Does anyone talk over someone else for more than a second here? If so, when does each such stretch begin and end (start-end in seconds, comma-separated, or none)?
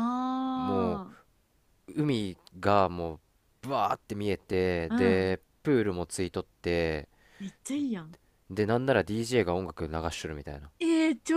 none